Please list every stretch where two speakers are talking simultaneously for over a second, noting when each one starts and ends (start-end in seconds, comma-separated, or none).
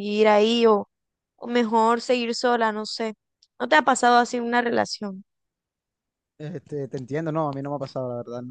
none